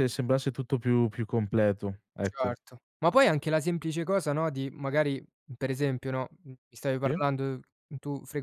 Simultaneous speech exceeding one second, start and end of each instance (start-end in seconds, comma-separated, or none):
none